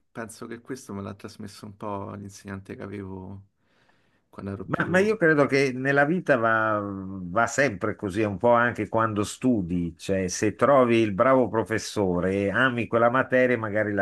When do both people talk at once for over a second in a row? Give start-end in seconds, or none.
none